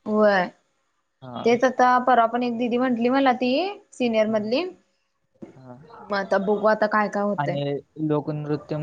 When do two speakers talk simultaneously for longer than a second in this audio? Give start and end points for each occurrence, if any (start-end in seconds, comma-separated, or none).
none